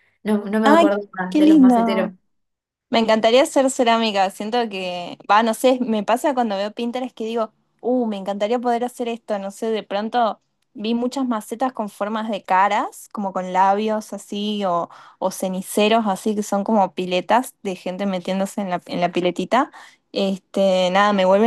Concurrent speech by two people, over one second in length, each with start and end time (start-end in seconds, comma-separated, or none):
0.6-2.1